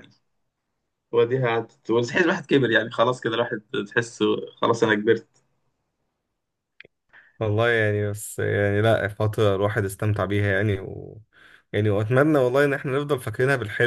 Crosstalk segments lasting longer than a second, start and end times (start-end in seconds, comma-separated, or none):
none